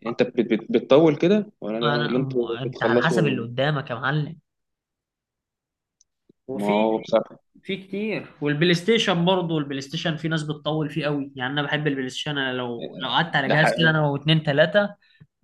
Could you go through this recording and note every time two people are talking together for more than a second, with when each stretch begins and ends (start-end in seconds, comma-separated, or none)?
1.8-3.4